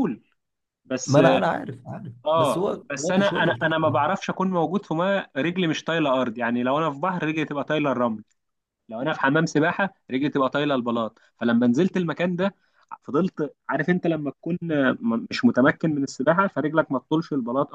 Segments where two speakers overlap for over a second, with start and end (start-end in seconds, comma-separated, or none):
2.3-4.0